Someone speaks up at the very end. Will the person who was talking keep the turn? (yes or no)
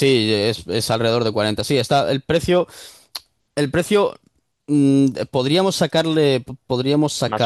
yes